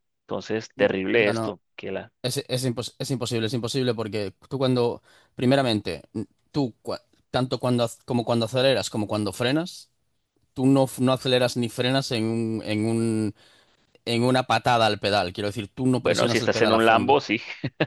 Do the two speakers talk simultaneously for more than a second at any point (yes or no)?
yes